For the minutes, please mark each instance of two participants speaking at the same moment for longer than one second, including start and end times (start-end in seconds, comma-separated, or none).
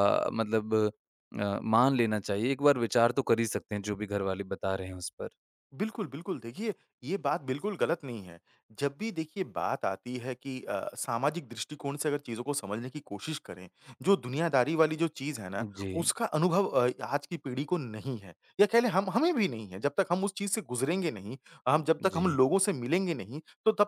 none